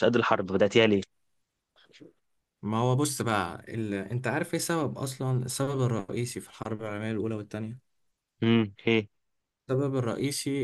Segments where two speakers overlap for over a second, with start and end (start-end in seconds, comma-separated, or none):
none